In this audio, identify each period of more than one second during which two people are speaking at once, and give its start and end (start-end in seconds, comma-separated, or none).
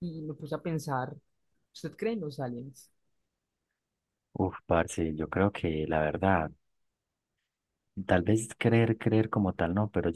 none